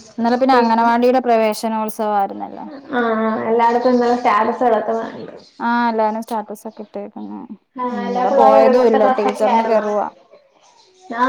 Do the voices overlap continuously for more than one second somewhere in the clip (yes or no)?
yes